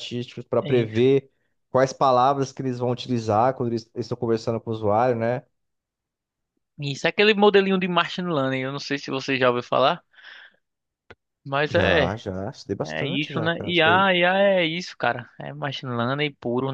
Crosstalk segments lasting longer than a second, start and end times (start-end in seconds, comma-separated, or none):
12.8-14.1